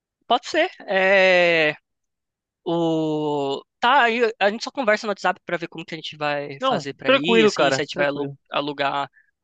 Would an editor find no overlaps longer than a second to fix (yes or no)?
no